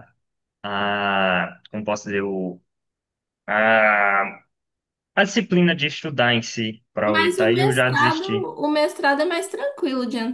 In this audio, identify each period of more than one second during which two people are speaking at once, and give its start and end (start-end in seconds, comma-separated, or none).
7.1-8.3